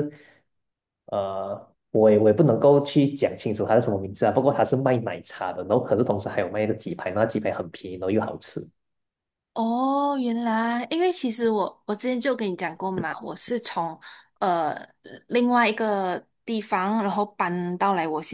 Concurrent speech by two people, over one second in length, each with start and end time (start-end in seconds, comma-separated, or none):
none